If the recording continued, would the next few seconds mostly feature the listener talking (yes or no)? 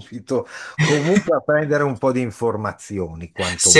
yes